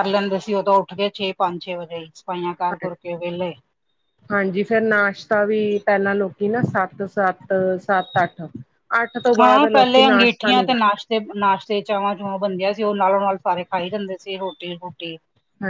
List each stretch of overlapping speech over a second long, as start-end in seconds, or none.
9.4-10.8